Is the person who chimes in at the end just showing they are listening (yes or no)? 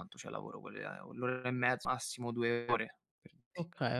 no